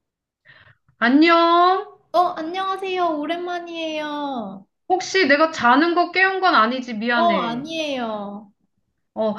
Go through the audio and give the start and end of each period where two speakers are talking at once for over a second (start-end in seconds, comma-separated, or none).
none